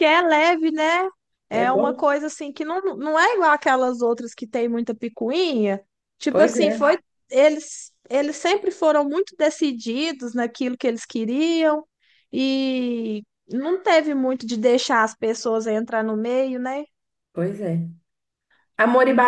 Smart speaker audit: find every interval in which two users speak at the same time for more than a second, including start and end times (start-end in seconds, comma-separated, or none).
none